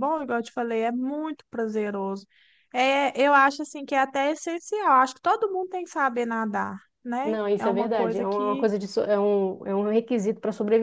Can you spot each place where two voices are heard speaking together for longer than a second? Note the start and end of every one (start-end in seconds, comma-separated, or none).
7.2-8.7